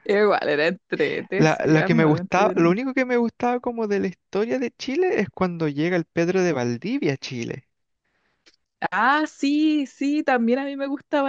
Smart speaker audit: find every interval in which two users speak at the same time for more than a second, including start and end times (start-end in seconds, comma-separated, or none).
1.4-2.8